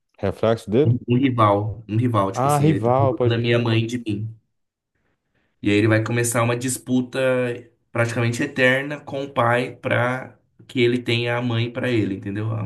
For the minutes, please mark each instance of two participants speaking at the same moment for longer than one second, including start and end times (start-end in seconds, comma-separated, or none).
2.3-3.7